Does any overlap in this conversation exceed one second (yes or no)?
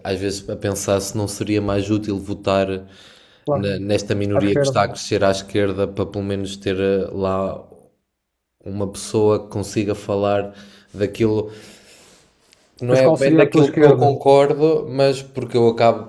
yes